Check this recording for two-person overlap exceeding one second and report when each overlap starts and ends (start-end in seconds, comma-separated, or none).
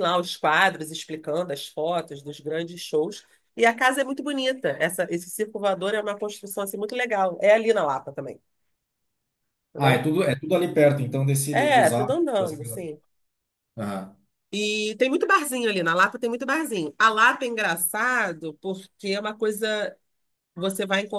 11.5-12.8